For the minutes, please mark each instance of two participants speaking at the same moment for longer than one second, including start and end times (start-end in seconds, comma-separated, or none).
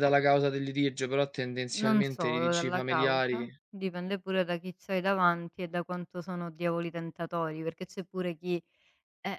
1.8-3.5